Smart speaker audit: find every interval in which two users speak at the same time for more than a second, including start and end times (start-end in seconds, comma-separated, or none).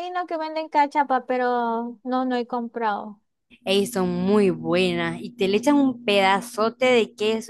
none